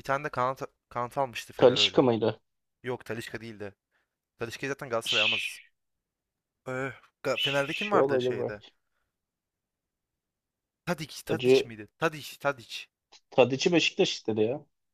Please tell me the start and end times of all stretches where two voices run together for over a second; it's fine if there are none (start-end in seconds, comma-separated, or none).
7.3-8.6